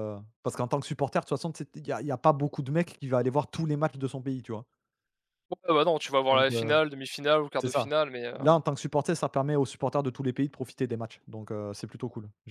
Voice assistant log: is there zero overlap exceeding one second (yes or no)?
yes